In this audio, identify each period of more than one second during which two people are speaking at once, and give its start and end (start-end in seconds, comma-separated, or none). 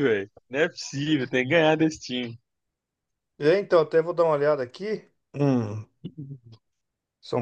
none